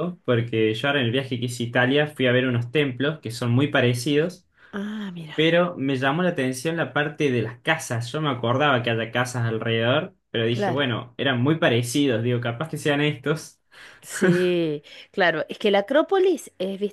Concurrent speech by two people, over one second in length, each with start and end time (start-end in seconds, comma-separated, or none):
none